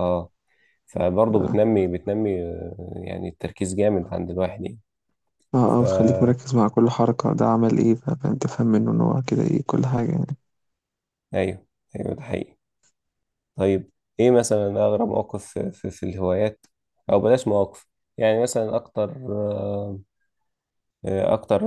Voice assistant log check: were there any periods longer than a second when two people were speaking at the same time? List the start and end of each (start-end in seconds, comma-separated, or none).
none